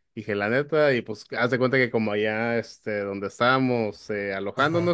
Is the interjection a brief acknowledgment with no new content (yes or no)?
yes